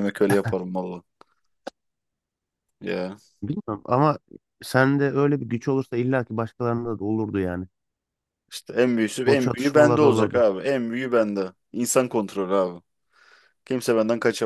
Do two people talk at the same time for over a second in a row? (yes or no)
yes